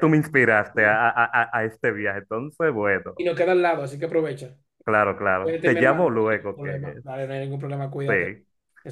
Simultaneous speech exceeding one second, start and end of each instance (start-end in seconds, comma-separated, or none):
5.4-6.7